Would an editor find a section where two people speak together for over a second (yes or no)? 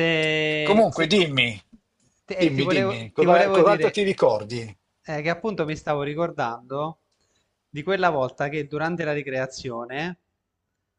yes